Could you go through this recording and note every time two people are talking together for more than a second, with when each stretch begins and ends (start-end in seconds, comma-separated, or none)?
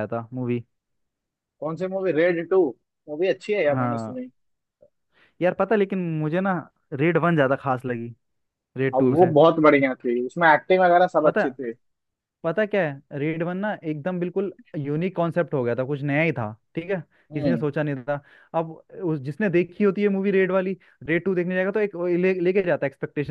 none